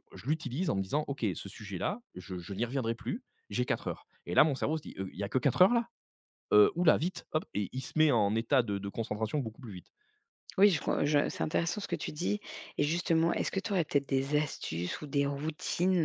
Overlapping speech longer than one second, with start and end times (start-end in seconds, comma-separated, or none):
none